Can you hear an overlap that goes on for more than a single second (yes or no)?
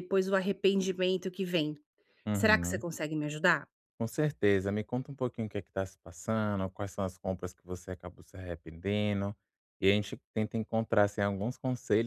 no